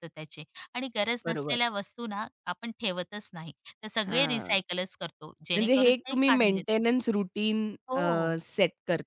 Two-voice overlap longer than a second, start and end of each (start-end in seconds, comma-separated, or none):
5.5-6.8